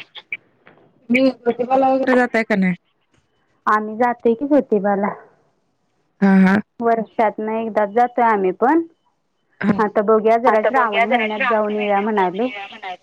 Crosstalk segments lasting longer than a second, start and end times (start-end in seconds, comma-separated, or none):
10.5-12.5